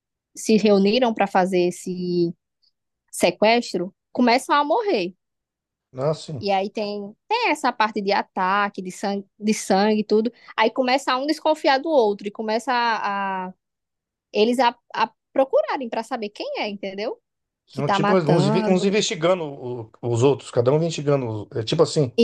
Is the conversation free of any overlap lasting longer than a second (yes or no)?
no